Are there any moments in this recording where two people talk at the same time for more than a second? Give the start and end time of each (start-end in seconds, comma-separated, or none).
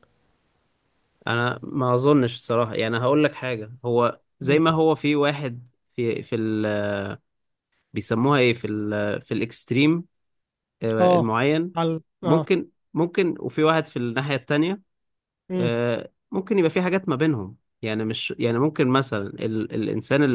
none